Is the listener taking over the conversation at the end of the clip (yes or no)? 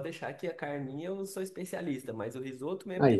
no